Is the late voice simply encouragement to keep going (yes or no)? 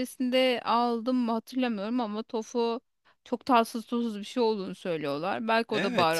no